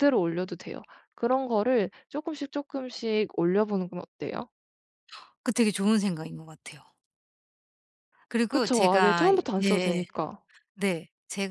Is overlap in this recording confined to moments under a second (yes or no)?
no